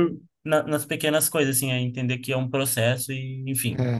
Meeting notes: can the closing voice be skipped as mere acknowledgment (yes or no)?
no